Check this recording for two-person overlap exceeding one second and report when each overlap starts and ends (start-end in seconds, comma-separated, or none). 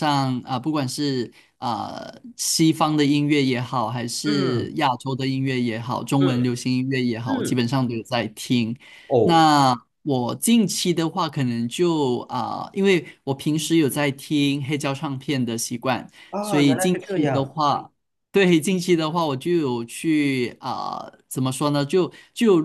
16.3-17.6